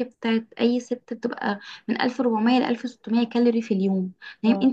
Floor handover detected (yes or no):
no